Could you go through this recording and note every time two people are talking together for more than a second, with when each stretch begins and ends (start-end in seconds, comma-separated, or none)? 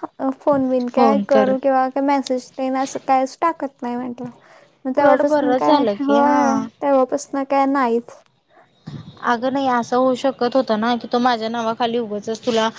5.0-6.7